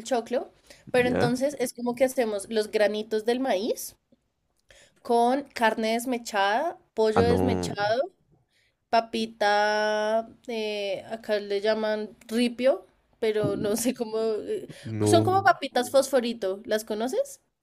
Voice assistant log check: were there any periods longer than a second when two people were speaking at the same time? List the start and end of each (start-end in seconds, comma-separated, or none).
none